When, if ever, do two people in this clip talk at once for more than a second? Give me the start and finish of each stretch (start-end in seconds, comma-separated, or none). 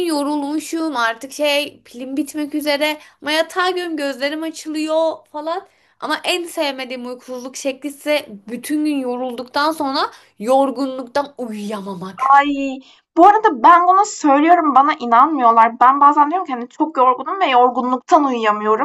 none